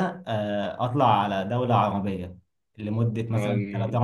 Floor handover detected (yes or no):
no